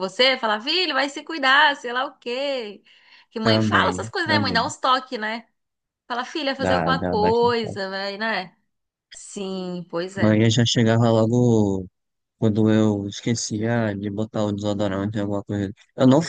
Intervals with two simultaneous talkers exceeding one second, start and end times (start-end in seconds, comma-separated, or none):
3.4-4.7, 6.6-7.9